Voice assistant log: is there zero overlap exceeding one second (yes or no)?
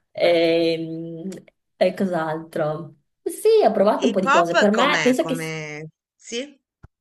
no